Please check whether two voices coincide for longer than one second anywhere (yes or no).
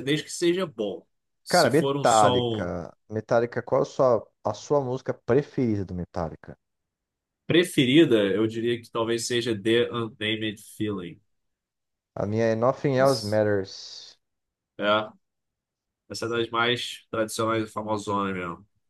yes